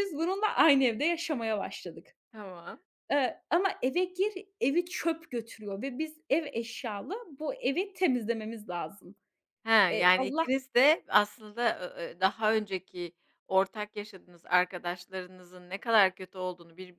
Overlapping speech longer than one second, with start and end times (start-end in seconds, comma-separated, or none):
none